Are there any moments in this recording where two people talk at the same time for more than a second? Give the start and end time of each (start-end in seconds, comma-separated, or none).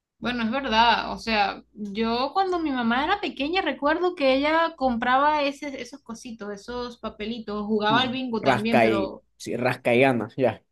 7.9-9.2